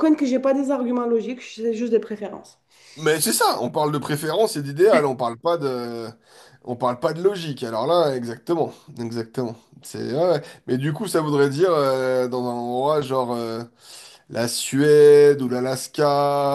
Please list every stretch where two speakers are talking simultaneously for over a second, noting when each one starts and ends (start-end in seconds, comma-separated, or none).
none